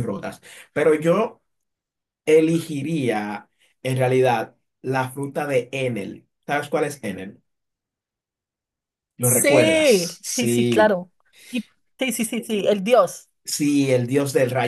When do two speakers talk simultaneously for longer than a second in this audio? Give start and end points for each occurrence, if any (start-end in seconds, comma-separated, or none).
9.2-11.0